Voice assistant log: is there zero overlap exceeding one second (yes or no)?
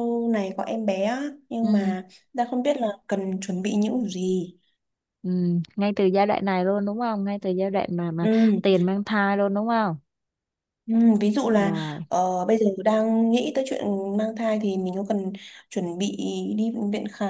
yes